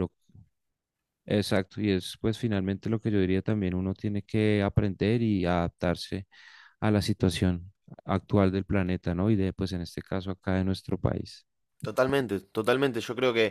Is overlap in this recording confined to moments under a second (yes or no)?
yes